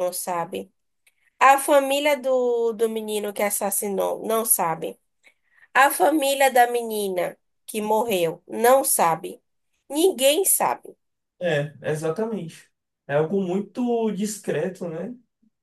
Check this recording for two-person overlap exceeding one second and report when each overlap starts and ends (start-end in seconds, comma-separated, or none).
none